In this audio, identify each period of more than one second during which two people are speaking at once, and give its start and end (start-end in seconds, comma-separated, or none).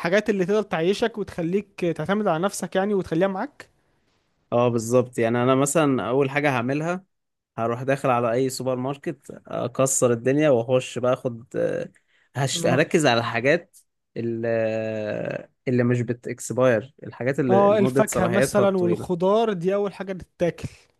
17.5-19.2